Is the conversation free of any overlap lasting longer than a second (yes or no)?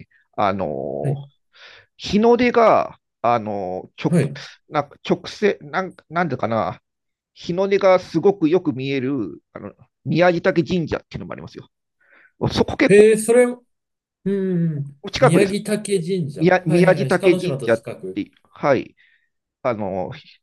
no